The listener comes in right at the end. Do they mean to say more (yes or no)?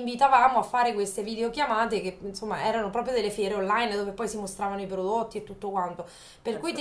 no